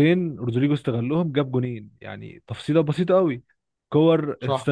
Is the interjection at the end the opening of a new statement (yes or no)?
no